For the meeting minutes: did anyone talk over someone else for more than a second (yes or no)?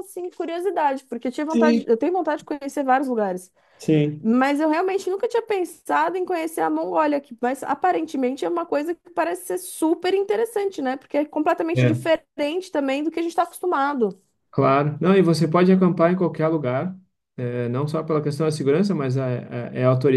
no